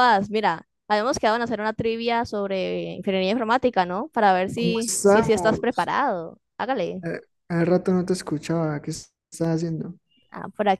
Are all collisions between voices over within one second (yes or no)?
no